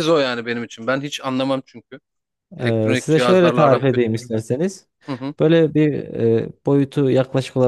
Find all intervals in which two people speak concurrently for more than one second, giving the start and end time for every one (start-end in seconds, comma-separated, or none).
2.6-4.2